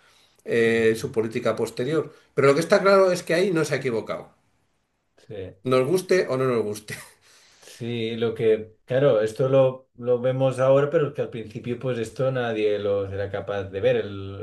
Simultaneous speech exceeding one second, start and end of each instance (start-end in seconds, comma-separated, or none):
none